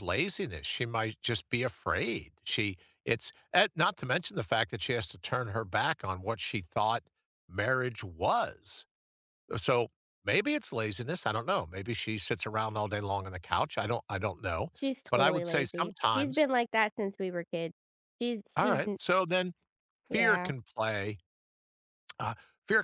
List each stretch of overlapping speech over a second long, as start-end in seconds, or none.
15.1-16.5